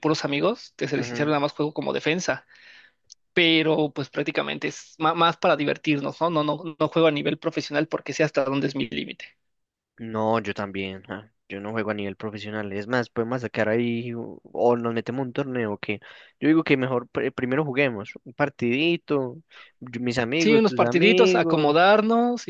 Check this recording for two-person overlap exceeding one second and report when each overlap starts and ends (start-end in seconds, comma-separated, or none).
20.4-21.7